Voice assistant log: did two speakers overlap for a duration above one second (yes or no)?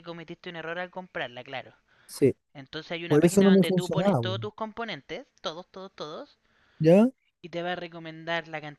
yes